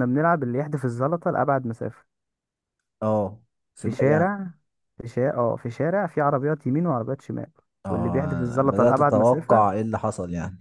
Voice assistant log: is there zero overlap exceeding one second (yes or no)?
no